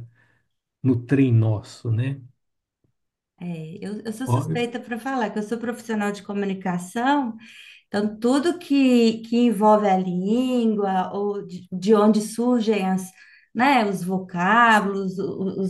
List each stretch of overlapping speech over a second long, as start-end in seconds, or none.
none